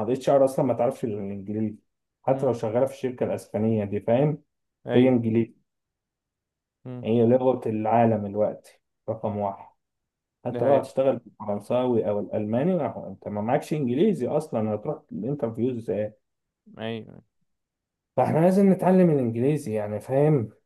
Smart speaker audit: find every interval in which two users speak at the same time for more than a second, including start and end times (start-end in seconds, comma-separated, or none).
none